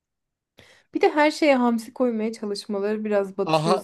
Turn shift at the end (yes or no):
yes